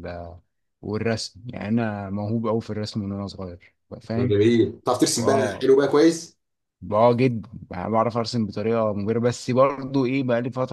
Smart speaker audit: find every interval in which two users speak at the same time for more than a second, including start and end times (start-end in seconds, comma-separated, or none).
none